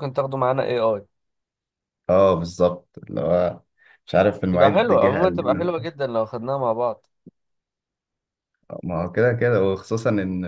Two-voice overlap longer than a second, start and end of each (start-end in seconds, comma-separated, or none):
4.5-5.7